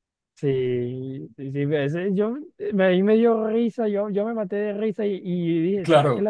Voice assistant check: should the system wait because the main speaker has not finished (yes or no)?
yes